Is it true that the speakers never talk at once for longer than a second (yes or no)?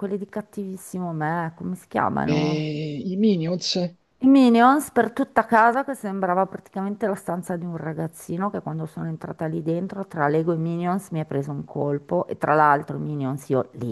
yes